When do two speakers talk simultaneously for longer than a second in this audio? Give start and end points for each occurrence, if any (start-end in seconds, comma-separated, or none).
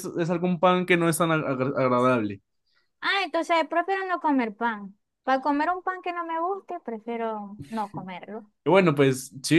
none